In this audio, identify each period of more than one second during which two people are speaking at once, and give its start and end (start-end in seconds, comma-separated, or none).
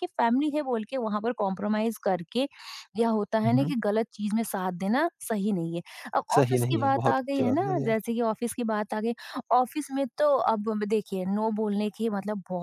6.3-8.0